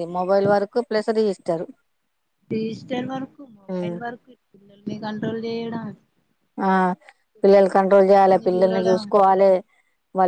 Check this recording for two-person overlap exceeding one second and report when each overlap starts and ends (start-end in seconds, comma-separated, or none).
7.5-9.0